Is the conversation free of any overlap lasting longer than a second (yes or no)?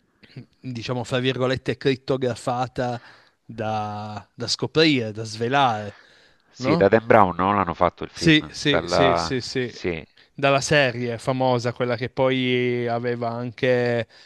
no